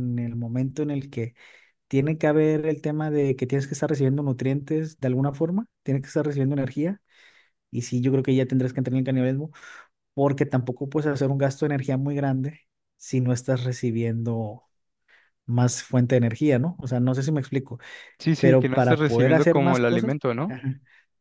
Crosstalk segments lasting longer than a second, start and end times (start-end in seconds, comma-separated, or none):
18.4-20.5